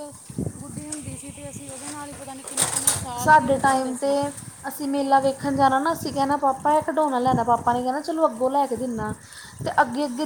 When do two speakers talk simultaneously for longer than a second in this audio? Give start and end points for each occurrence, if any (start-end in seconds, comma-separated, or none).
none